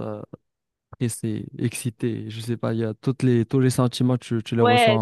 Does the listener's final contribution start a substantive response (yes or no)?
yes